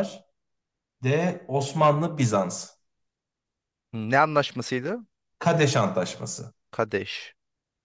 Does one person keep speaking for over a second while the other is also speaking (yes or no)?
no